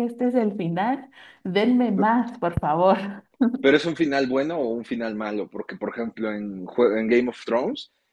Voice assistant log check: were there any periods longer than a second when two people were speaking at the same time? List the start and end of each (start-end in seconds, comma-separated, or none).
none